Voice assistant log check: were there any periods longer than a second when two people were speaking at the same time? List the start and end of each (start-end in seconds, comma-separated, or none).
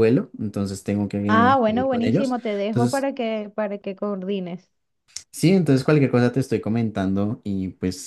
1.3-3.0